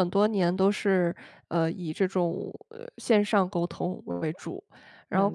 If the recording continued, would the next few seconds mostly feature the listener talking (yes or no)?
no